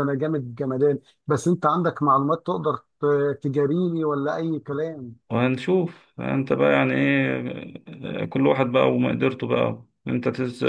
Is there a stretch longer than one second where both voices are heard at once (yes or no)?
no